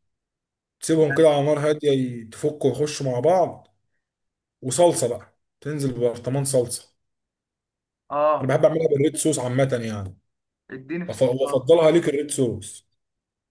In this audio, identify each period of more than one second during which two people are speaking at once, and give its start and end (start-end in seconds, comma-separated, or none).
none